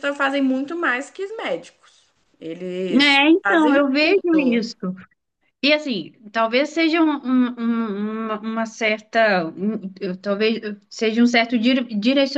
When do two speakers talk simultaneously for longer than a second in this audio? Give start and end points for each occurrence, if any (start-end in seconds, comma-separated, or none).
2.9-4.7